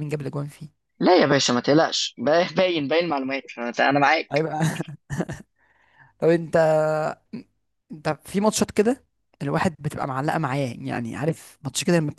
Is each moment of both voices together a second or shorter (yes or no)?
yes